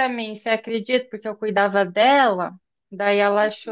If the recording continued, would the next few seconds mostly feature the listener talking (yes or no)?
no